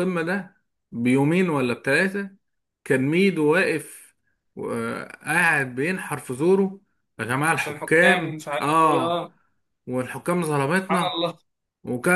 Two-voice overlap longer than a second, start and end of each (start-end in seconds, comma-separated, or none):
7.5-9.3